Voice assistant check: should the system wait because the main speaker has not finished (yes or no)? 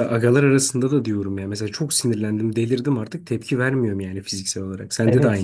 no